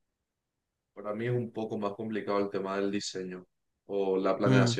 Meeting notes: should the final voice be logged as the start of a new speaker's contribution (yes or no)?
no